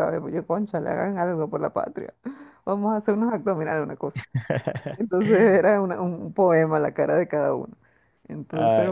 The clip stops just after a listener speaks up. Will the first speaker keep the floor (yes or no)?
no